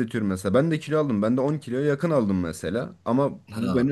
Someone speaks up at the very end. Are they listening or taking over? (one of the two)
listening